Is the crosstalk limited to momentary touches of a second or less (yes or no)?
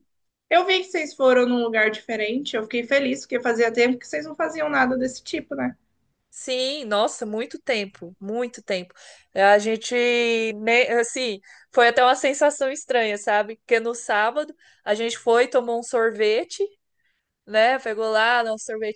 yes